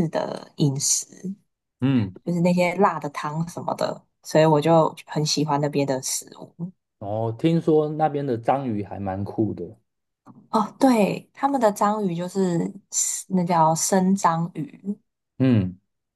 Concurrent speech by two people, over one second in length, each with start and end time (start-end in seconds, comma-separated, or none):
none